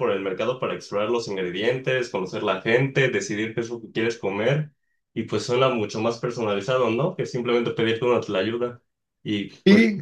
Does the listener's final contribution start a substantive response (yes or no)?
no